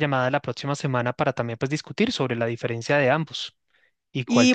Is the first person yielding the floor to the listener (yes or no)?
yes